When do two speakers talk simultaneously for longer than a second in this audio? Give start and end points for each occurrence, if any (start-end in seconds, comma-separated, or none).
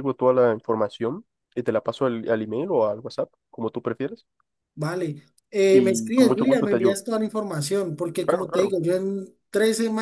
5.7-7.0